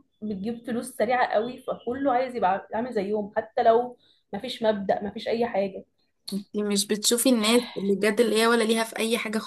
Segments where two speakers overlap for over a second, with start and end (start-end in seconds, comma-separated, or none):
none